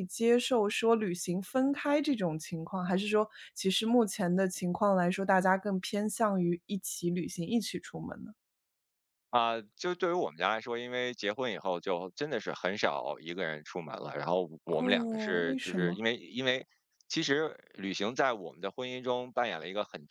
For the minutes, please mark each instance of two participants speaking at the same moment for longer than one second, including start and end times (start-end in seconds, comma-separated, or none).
14.8-16.0